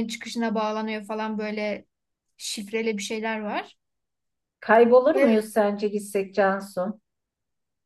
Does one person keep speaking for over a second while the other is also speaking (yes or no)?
no